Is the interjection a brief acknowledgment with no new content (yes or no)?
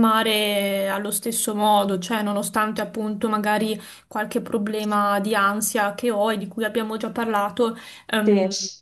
yes